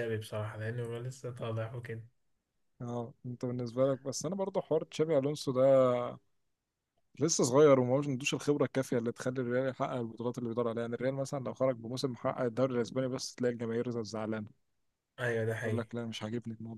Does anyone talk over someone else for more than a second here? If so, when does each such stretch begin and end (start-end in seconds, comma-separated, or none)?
none